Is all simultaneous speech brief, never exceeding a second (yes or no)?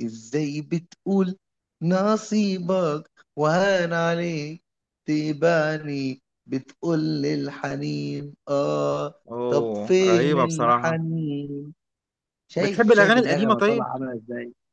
no